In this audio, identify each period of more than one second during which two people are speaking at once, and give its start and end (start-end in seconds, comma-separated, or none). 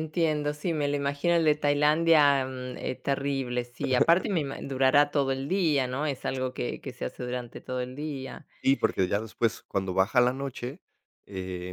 none